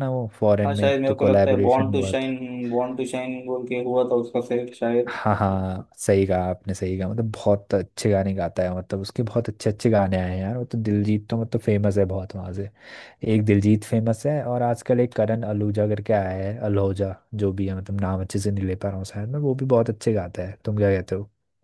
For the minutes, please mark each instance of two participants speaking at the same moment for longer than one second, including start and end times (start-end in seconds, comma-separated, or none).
0.7-2.4